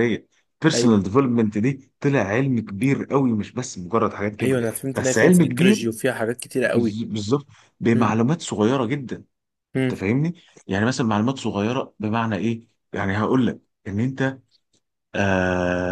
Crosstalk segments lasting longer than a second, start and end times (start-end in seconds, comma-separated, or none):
4.4-5.8